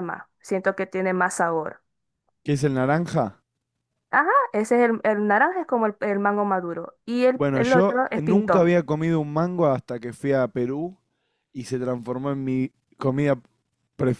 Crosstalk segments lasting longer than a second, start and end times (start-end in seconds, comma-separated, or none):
7.3-8.7